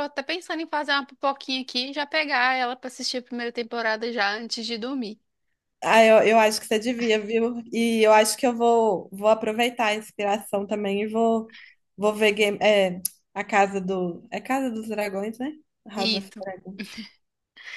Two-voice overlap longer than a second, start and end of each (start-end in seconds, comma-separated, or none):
none